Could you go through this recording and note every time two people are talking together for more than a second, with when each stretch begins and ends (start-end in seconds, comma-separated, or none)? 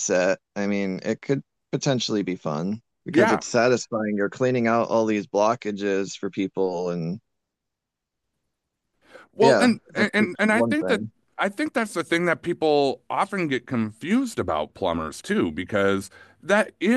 9.4-11.0